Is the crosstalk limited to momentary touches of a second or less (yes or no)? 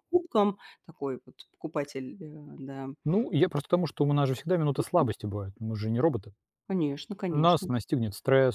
yes